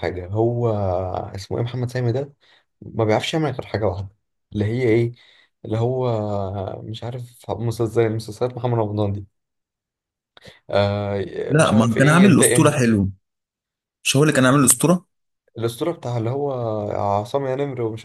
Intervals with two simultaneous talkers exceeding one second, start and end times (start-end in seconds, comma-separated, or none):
11.5-12.7